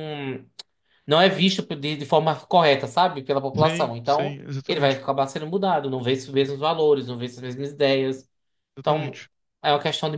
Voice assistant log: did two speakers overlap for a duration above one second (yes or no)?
yes